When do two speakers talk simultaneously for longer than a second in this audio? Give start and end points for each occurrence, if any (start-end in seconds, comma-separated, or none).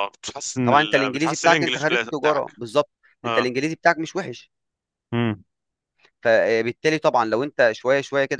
0.6-2.5